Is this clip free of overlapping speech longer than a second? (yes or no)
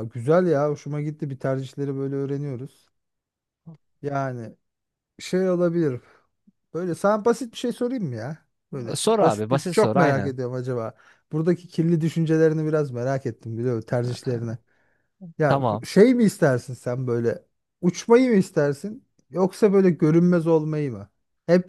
no